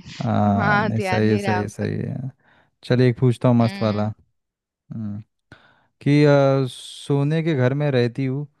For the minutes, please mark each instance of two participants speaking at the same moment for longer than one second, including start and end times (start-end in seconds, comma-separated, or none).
0.6-1.9